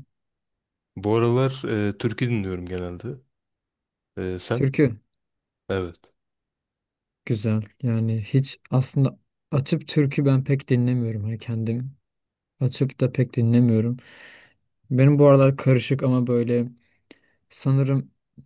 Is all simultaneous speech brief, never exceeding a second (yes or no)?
yes